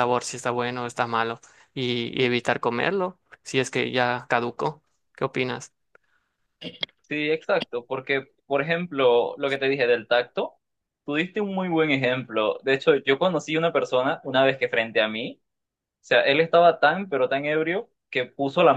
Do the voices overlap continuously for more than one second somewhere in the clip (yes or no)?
no